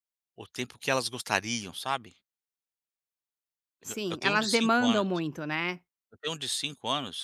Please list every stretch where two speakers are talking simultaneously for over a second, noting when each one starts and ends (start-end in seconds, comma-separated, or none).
3.9-5.2